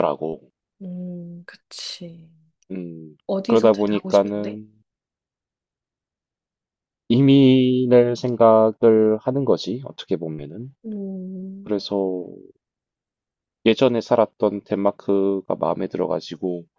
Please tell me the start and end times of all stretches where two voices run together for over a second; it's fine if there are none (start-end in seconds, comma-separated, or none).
3.3-4.6